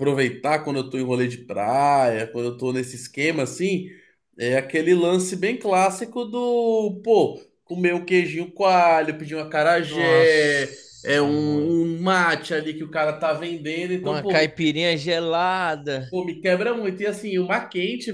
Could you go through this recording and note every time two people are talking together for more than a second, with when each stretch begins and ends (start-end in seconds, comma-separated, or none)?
9.9-11.8